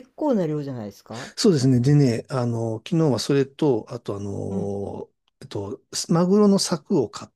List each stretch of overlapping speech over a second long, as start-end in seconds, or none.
none